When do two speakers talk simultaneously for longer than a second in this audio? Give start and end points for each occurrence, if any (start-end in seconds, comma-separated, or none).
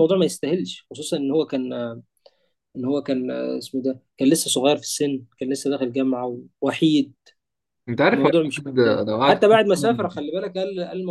8.1-10.2